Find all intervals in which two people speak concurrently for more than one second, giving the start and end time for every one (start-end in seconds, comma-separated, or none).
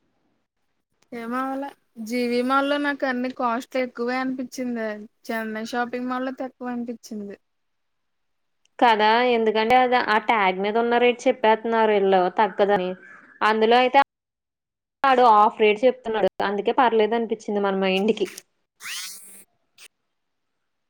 none